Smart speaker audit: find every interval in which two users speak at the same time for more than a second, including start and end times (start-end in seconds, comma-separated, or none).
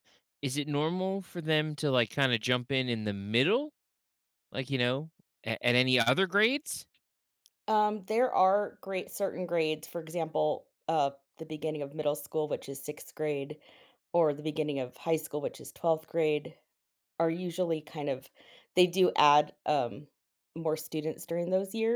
none